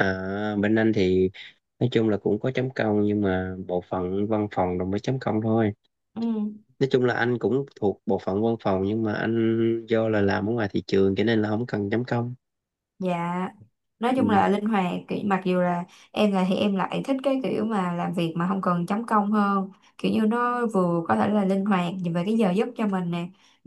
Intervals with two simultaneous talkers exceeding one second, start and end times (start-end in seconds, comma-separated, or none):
none